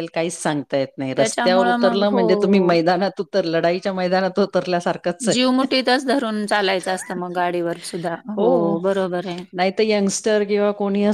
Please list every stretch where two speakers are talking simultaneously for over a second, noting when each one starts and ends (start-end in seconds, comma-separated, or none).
1.1-2.8